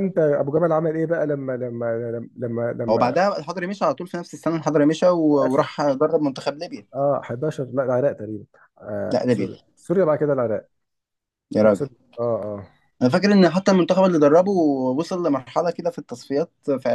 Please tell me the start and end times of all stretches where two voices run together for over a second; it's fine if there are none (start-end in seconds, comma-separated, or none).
none